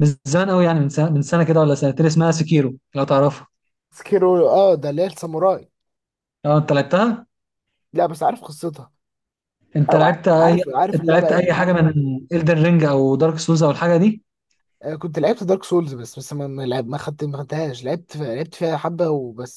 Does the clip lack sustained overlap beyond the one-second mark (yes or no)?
no